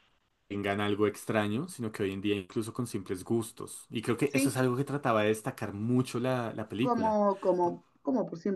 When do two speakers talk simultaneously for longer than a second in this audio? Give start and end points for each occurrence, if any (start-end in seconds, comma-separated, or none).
none